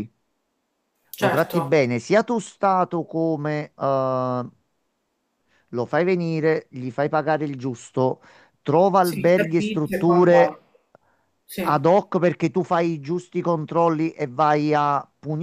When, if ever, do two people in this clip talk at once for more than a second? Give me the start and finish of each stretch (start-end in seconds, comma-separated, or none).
9.0-10.6